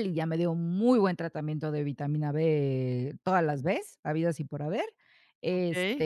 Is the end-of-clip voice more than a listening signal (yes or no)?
no